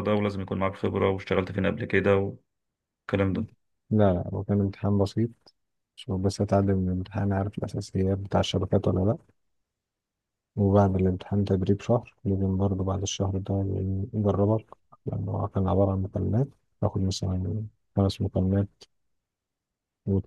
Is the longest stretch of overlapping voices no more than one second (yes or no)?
yes